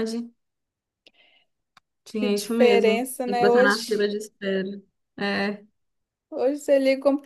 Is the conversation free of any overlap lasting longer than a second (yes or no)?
no